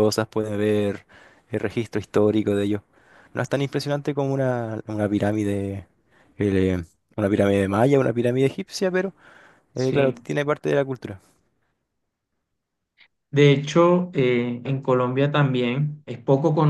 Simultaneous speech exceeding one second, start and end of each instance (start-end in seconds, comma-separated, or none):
none